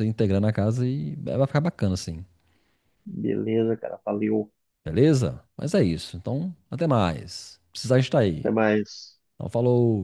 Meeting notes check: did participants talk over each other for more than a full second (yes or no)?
no